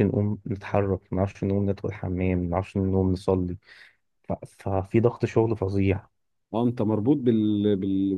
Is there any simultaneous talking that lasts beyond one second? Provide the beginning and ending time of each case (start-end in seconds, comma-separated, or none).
none